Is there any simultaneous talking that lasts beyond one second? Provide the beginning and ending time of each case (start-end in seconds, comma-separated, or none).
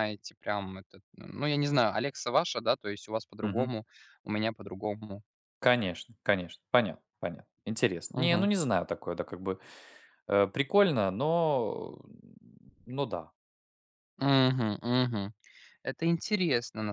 none